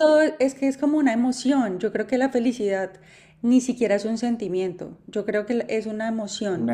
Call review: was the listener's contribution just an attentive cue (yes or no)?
yes